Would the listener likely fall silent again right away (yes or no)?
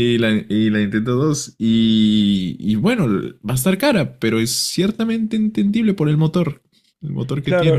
no